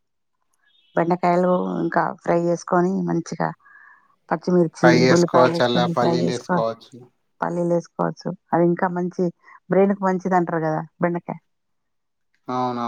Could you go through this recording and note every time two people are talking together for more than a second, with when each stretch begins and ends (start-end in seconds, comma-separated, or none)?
4.8-6.6